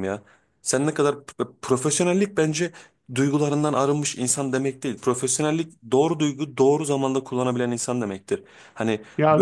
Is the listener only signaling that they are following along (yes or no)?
yes